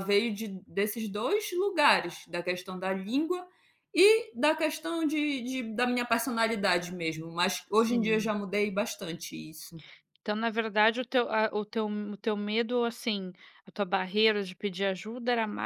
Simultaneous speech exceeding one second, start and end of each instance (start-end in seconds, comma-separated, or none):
none